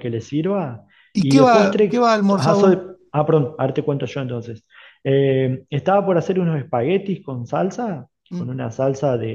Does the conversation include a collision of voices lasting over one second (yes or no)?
yes